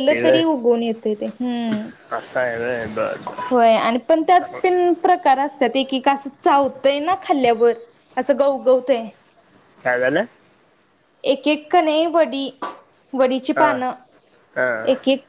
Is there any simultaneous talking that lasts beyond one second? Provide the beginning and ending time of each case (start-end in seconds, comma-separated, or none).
none